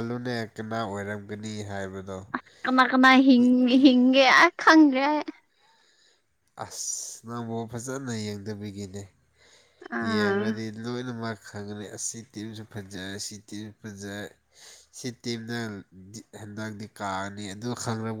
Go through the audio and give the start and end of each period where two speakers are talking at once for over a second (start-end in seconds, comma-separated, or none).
none